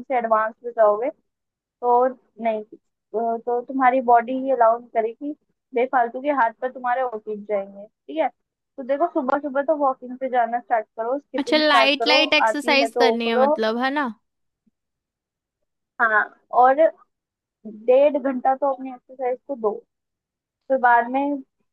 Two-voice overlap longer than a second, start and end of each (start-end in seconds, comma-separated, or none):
11.4-13.5